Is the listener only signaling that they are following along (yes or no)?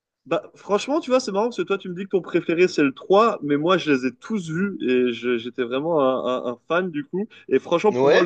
yes